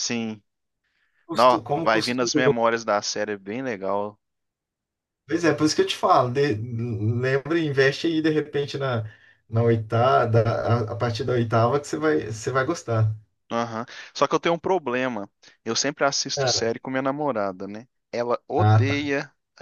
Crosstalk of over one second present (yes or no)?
yes